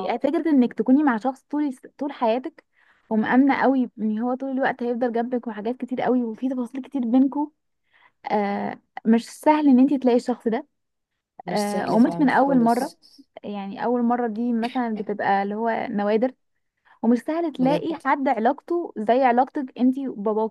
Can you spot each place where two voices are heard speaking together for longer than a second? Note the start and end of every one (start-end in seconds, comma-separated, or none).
11.5-13.0